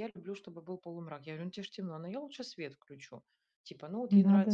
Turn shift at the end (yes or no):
no